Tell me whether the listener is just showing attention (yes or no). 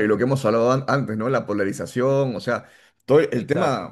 yes